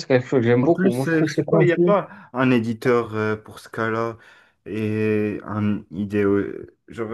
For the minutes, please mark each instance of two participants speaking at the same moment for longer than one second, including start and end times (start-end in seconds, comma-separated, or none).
0.6-2.0